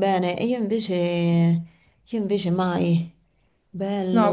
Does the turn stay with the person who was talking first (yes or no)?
no